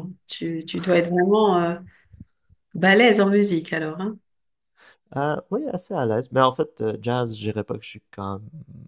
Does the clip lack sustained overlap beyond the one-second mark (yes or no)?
yes